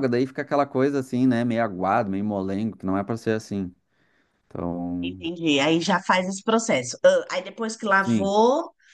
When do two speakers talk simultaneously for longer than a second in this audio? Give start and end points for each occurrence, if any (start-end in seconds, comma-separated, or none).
none